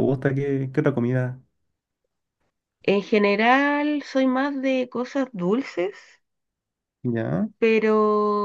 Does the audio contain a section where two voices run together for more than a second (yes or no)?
no